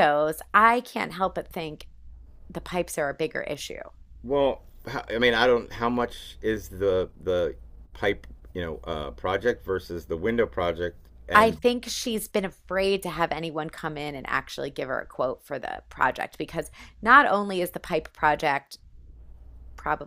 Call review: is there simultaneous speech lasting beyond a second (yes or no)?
no